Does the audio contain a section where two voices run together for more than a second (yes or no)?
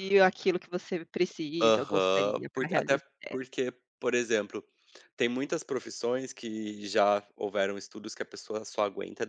yes